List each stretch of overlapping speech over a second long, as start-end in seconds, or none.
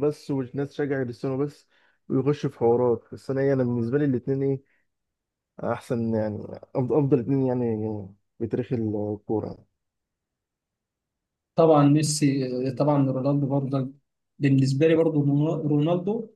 none